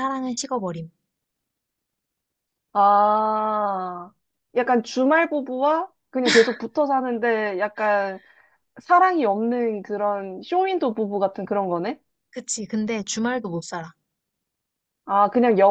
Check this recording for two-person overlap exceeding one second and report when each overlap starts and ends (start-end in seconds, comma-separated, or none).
none